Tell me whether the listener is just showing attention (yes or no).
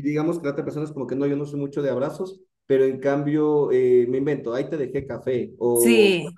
yes